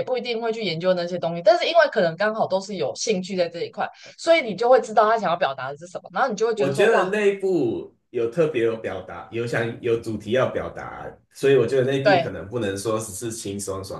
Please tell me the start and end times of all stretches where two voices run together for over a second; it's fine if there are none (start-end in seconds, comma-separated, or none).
none